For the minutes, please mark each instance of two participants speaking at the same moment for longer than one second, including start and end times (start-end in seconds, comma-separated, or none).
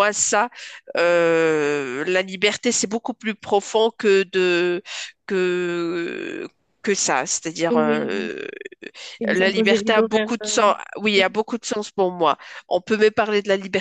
9.3-10.7